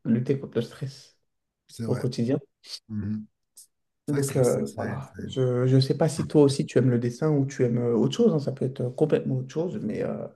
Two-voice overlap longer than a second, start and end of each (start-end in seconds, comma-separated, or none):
4.1-5.4